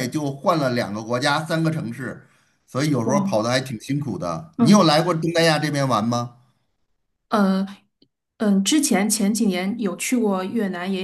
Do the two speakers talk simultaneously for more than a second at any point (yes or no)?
no